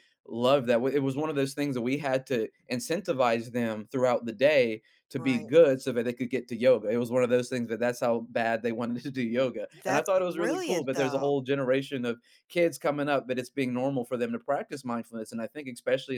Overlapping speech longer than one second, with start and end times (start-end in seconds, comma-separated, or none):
9.8-11.3